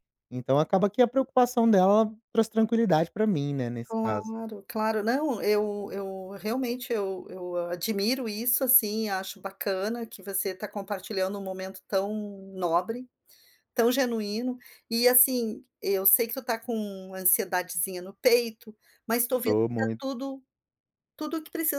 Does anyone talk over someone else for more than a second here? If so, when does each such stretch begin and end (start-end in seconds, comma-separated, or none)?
none